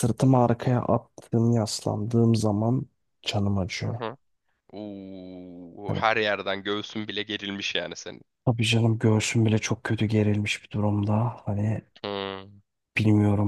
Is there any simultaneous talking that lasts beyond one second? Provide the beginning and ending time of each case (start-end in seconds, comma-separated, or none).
none